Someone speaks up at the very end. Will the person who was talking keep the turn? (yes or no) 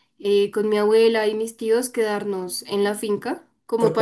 yes